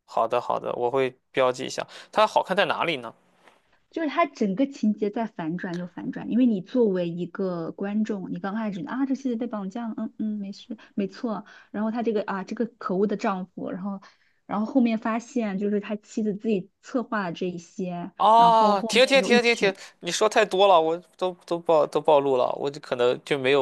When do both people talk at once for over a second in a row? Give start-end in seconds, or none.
18.2-19.8